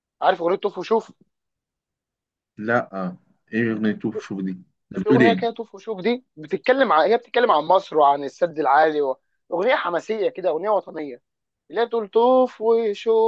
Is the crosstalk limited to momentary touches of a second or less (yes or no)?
yes